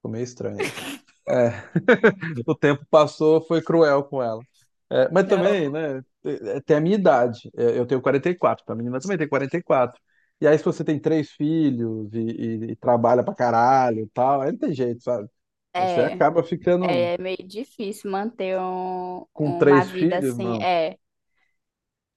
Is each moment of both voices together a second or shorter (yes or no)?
no